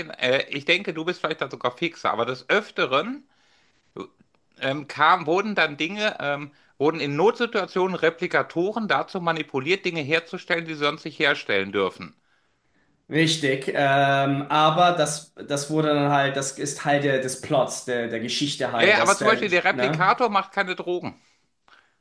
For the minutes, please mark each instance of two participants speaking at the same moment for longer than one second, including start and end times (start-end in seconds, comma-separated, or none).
18.7-20.1